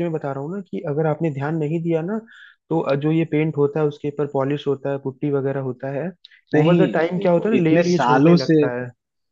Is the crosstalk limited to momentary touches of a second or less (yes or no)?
no